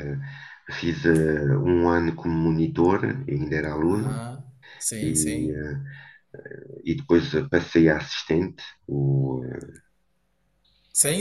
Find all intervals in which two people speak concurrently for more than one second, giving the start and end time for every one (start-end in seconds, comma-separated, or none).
none